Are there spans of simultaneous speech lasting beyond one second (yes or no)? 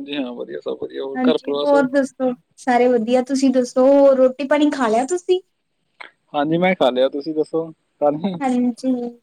no